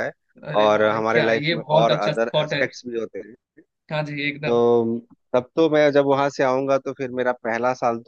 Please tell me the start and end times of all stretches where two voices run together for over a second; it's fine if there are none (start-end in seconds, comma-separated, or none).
0.6-2.6